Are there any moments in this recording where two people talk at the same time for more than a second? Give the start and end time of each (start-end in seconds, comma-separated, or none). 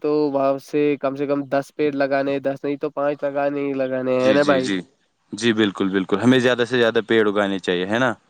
none